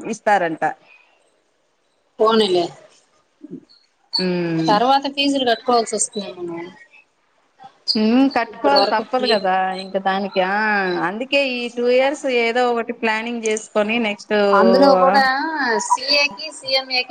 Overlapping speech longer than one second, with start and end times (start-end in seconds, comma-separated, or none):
none